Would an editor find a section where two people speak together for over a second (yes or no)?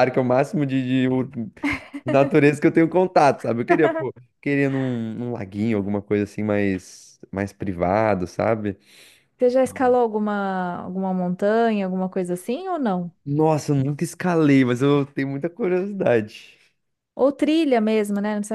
no